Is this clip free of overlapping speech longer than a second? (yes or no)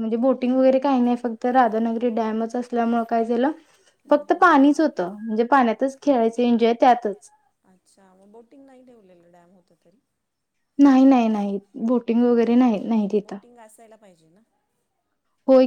yes